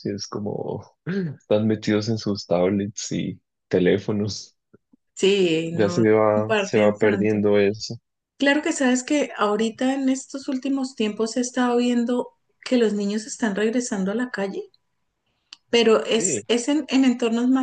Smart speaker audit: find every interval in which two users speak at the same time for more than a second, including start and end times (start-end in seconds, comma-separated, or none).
5.7-7.4